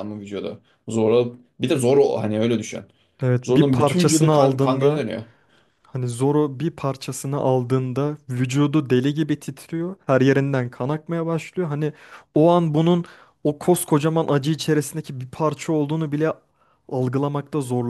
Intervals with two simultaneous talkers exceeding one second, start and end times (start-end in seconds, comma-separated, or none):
3.4-5.0